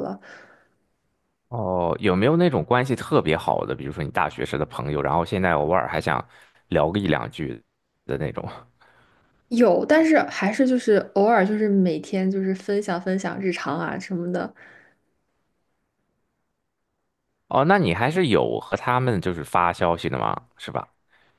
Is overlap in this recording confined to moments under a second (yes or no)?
yes